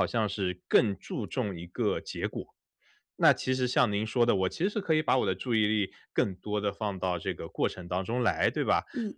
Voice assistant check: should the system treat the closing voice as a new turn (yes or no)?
no